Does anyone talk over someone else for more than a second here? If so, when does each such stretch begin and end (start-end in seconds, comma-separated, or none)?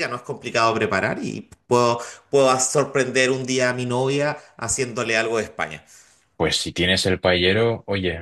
none